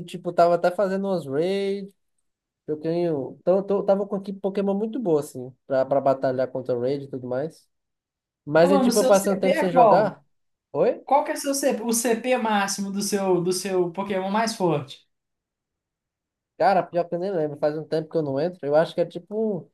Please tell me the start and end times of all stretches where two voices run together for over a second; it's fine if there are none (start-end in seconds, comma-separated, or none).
8.6-10.2